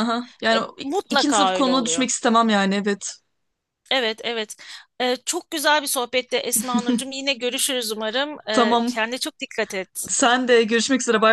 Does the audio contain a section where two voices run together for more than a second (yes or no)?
yes